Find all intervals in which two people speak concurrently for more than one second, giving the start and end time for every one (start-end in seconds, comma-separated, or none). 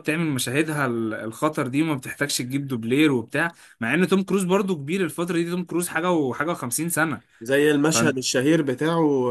none